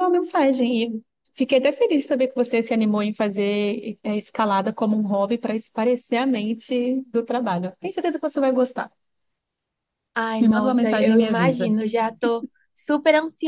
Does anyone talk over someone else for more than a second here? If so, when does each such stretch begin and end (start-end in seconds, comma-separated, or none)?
10.4-11.7